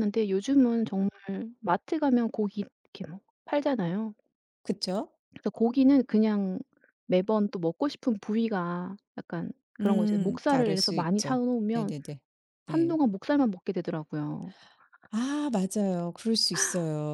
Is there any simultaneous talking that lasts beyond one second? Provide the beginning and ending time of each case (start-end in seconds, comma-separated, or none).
9.8-11.9